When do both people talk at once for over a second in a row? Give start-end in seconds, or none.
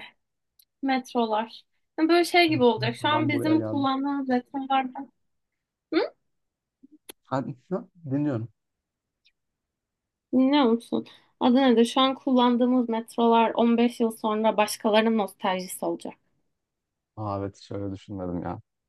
2.5-3.9